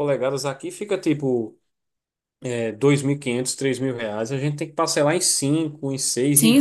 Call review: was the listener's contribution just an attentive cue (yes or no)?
no